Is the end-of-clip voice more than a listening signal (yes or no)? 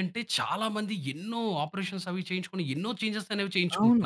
yes